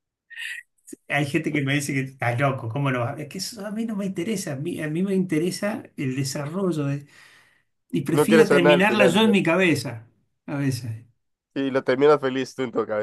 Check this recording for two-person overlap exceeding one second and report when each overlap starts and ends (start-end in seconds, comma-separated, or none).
8.0-9.3